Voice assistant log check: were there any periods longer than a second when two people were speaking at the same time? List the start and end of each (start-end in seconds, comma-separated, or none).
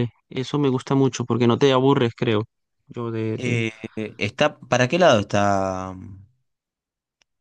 none